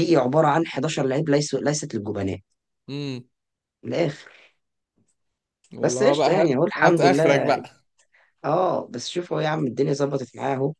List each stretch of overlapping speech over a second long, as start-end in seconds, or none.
5.8-7.4